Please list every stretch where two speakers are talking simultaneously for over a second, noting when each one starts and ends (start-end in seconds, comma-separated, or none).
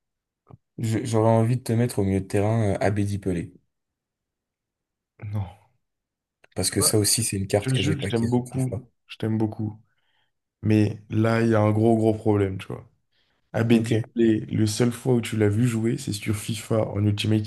7.6-8.8